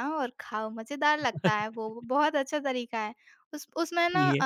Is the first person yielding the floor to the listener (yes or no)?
no